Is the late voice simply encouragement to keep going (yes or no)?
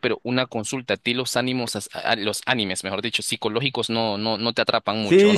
no